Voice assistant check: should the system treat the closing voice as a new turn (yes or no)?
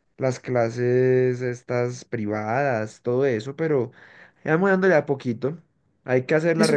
no